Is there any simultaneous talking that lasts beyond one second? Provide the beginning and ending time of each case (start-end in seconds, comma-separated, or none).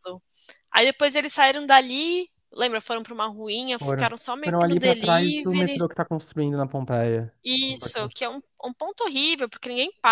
3.8-5.8